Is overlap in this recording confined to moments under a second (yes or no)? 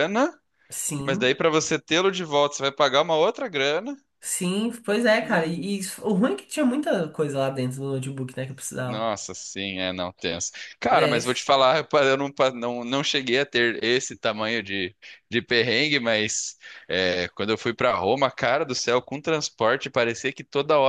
yes